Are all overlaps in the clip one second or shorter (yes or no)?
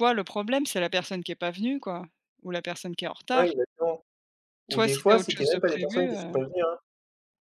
no